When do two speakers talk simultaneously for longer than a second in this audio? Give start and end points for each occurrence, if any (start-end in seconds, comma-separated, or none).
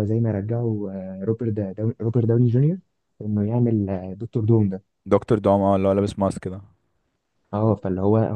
none